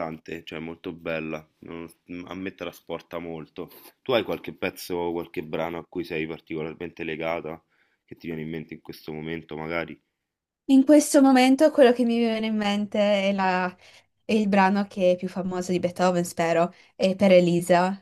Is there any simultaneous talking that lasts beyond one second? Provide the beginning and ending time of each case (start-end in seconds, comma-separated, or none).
none